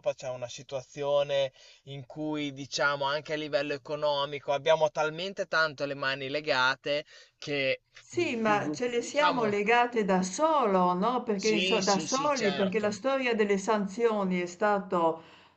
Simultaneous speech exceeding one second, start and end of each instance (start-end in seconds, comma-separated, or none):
8.0-9.5, 11.3-13.0